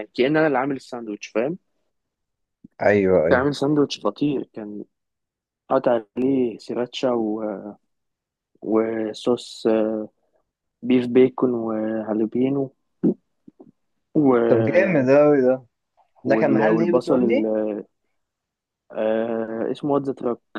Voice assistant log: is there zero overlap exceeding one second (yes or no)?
no